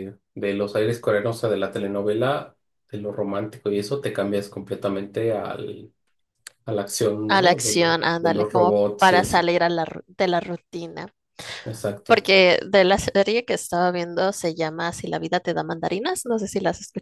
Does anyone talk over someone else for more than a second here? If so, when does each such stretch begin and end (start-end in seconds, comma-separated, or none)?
7.3-9.5